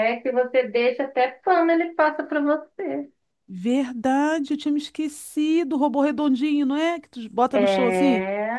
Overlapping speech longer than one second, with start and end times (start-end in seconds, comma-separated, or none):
none